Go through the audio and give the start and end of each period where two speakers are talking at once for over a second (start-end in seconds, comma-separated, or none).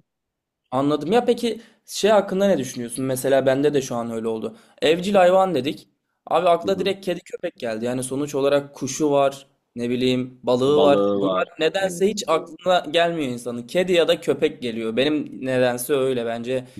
10.7-12.2